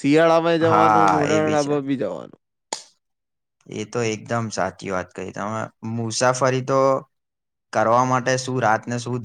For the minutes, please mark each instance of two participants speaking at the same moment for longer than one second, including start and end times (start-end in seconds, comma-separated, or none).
0.6-1.8